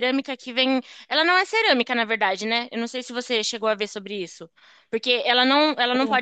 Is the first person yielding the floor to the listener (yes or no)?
no